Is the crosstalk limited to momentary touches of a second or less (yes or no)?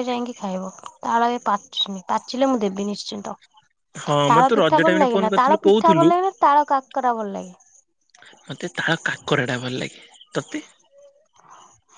no